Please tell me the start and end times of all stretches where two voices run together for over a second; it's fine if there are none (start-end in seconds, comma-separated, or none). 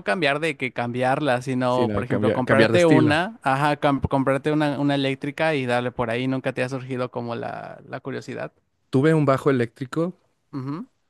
1.7-3.2